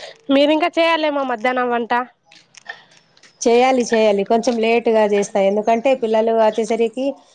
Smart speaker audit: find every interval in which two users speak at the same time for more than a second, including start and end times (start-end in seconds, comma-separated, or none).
none